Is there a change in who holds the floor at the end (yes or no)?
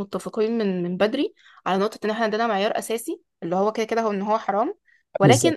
no